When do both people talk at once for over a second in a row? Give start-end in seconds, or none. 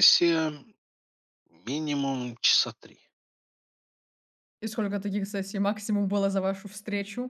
none